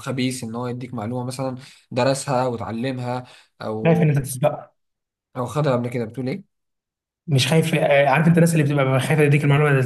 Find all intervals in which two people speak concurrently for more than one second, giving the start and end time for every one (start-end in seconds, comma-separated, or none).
none